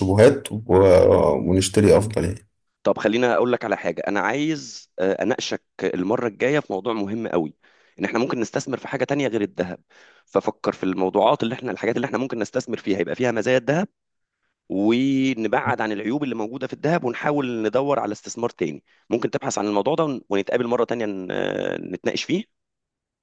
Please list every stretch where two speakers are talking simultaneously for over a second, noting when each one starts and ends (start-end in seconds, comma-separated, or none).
none